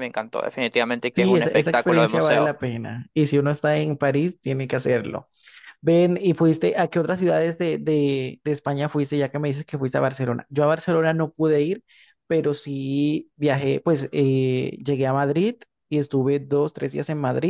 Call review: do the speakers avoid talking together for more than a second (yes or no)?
no